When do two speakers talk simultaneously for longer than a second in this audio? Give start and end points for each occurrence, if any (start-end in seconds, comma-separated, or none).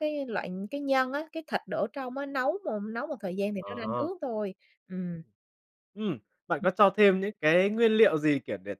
none